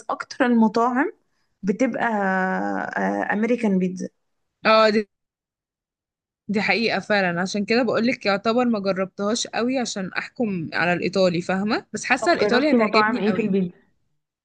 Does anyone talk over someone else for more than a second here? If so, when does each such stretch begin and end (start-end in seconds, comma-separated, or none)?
12.2-13.5